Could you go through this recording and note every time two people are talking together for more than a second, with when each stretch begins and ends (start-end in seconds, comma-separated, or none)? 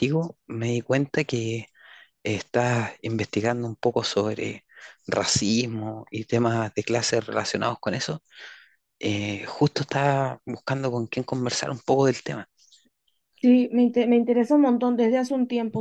none